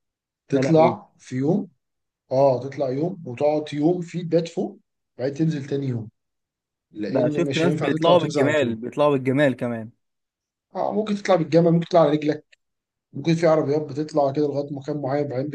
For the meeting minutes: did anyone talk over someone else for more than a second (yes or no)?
yes